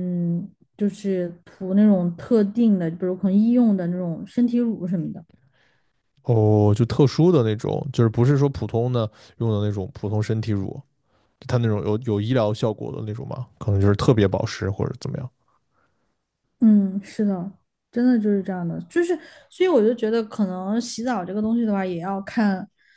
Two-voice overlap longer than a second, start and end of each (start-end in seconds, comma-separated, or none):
none